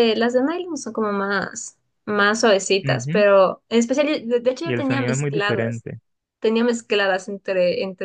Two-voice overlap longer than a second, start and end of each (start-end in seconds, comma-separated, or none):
4.6-5.8